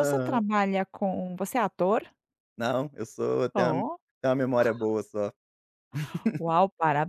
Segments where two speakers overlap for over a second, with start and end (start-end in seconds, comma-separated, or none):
none